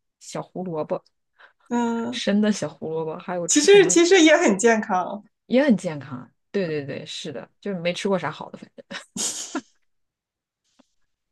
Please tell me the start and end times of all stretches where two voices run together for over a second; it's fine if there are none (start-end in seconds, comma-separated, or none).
none